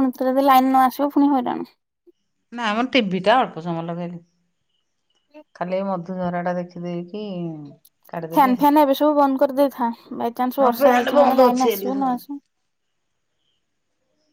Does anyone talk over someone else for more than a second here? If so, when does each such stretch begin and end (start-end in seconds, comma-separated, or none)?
10.6-12.2